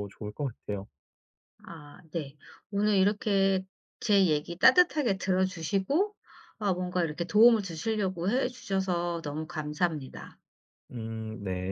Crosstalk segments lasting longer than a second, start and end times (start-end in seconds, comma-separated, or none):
none